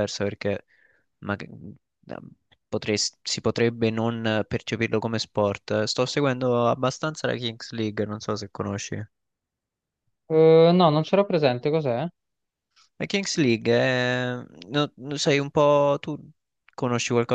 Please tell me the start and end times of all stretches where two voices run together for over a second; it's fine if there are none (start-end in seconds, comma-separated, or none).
none